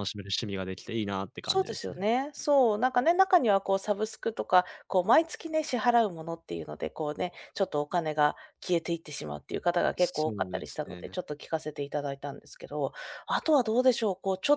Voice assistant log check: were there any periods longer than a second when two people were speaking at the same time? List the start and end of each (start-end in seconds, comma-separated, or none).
10.0-11.2